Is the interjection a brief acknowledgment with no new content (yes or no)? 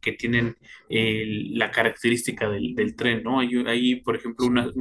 yes